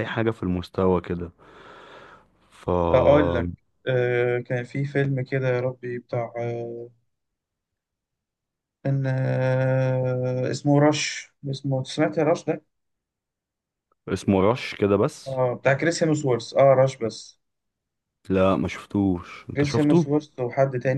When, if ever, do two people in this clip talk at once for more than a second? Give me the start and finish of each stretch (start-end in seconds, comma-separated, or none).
none